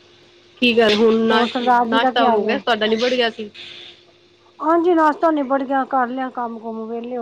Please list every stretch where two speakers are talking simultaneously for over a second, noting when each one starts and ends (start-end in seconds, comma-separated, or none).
1.3-2.6